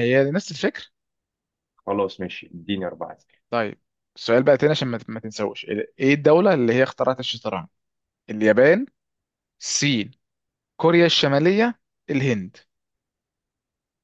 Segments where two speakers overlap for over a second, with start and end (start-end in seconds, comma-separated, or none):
none